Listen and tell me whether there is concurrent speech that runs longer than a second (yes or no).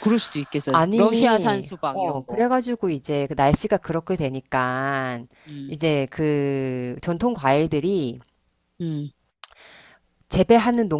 yes